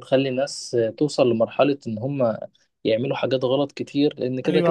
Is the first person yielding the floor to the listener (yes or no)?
yes